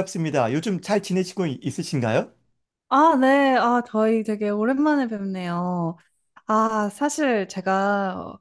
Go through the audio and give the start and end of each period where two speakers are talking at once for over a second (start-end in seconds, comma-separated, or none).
none